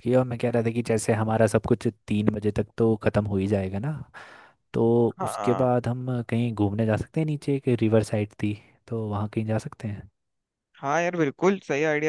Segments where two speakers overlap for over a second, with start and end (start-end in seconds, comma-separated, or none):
none